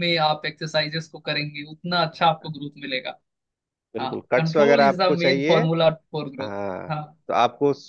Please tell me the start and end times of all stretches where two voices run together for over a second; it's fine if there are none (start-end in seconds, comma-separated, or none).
4.0-5.6